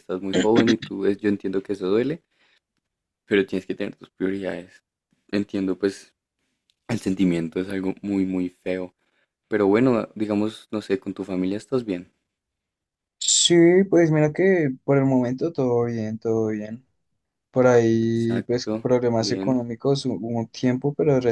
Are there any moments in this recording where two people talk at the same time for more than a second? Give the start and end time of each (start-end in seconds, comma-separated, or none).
18.0-19.6